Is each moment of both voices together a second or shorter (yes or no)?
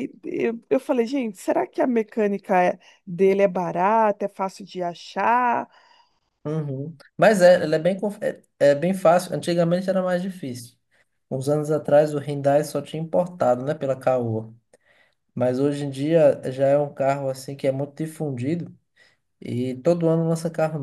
yes